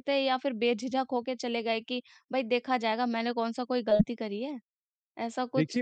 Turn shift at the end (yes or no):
yes